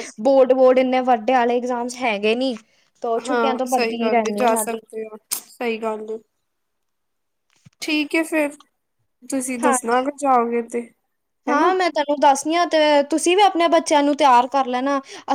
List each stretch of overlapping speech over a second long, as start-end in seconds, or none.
3.3-4.8